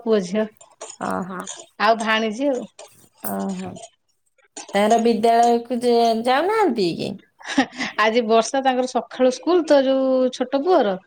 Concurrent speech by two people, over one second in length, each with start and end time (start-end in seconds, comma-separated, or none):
none